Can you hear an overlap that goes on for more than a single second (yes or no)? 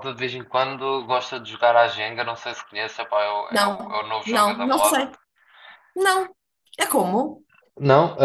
yes